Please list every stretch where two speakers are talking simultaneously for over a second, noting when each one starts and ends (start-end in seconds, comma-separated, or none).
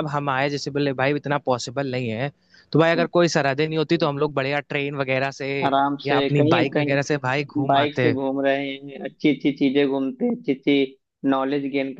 6.0-8.1